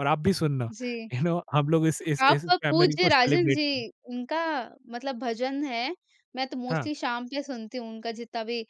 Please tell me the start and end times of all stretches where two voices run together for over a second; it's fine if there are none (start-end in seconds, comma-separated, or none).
2.3-3.8